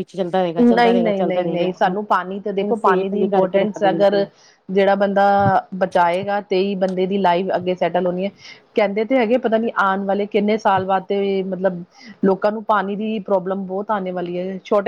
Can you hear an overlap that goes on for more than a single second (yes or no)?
yes